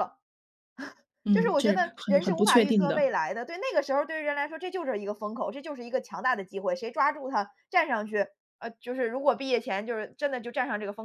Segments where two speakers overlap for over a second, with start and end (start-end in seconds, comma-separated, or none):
1.3-3.1